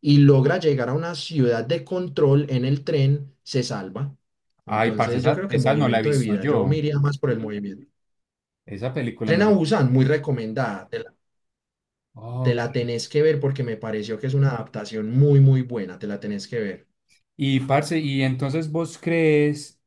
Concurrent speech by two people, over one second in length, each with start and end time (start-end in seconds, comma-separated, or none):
4.7-6.8